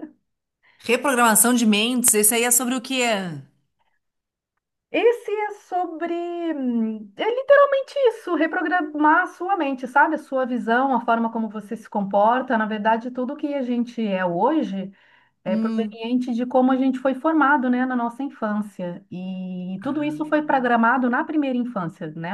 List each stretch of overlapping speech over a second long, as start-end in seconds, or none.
none